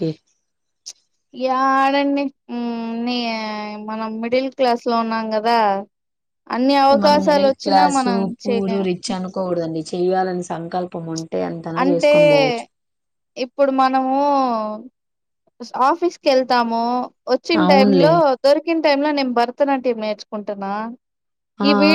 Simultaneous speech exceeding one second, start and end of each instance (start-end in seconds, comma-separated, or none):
7.0-8.8